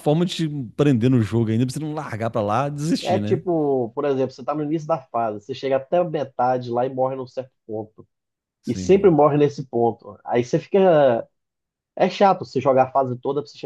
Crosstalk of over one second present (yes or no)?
no